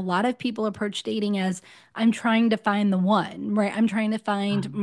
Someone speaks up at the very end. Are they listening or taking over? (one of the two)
listening